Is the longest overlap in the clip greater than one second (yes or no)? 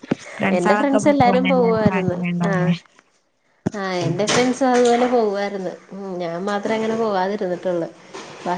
yes